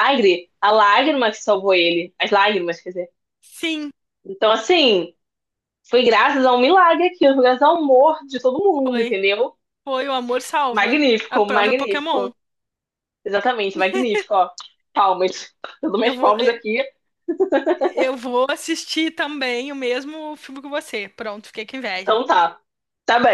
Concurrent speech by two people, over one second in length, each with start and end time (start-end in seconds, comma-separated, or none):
10.7-12.3